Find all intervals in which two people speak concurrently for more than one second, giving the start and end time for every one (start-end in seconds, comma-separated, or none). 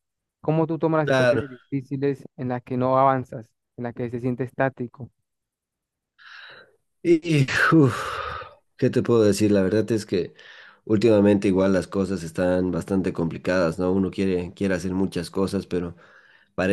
none